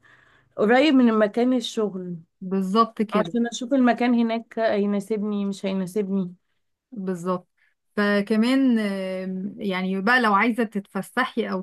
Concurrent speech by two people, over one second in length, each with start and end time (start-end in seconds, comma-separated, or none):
none